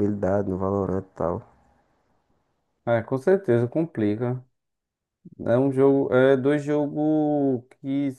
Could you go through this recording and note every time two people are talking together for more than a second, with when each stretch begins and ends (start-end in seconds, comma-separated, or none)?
none